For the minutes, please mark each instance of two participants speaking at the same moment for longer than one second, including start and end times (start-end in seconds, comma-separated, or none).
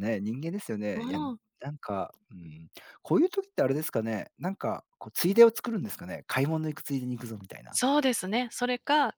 none